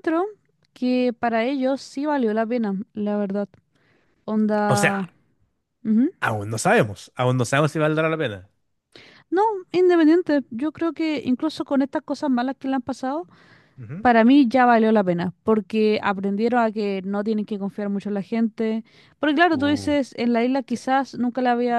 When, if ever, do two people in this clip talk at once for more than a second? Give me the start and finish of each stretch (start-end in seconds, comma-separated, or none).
none